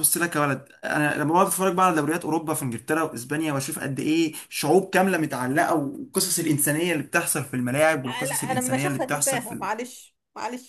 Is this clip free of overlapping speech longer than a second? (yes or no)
no